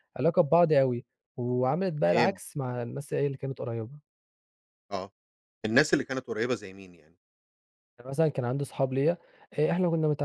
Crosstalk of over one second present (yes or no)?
no